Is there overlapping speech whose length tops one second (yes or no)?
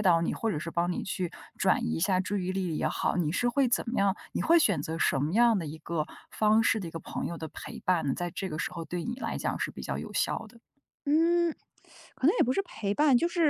no